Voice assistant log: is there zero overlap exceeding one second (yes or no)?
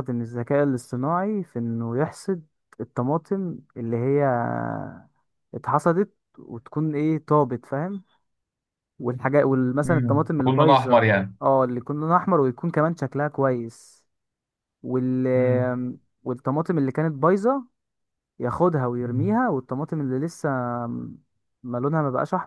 no